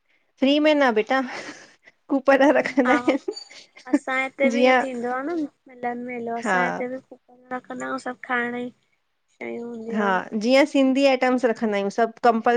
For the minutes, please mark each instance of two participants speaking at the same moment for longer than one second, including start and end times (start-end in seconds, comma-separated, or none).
none